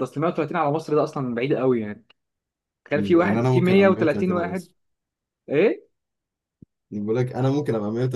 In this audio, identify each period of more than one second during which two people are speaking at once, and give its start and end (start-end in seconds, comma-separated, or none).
2.9-4.7